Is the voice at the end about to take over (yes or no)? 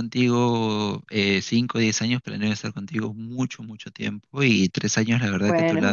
no